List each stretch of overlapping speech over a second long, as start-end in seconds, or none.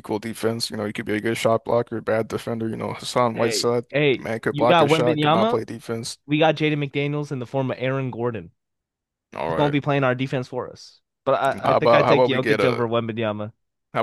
3.3-5.6, 11.5-12.8